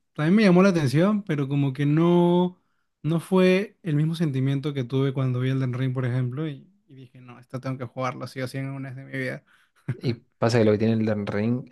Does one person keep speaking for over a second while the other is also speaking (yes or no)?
no